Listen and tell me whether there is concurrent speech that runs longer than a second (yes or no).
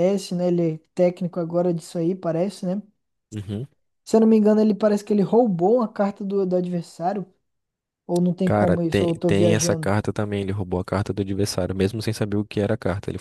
yes